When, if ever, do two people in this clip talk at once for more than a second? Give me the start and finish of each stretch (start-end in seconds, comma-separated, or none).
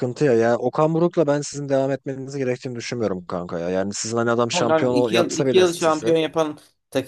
4.5-6.1